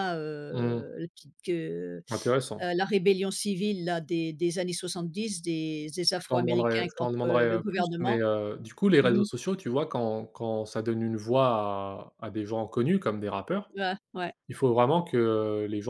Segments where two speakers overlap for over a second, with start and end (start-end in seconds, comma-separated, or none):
6.2-8.2